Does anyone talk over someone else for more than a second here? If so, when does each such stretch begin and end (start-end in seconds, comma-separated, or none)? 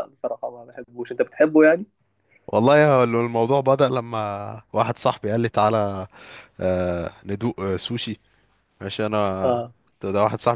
none